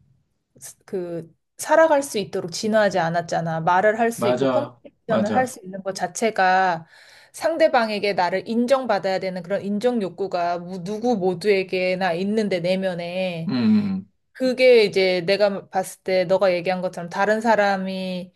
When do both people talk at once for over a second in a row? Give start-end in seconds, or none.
4.1-5.6